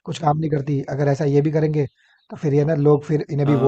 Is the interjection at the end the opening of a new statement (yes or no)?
yes